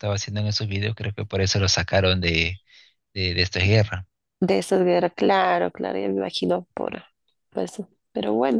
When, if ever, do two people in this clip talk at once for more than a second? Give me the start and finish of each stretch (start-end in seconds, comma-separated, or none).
none